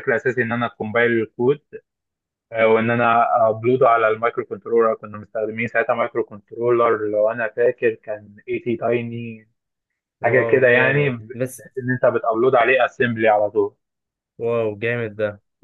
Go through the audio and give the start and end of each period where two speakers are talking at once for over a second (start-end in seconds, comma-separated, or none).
10.2-11.5